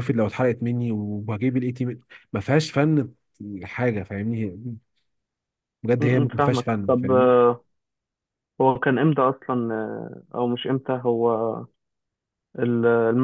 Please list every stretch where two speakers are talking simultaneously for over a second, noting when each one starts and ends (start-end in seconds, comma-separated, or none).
6.0-7.3